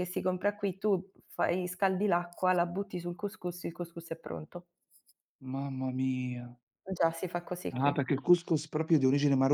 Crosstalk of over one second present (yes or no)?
no